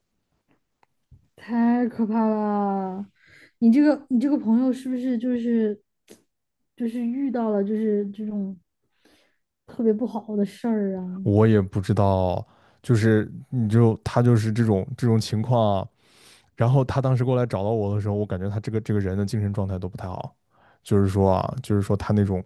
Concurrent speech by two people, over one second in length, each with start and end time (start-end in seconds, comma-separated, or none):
none